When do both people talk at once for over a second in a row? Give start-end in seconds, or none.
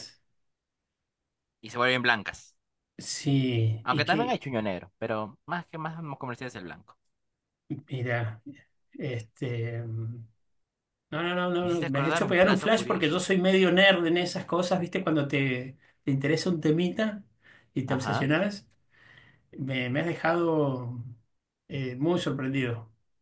11.6-13.3